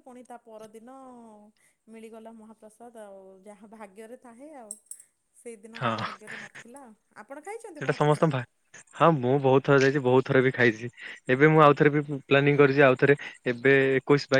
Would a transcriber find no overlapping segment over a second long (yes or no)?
yes